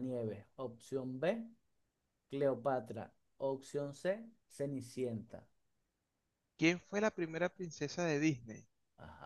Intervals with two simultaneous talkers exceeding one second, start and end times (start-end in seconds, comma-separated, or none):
none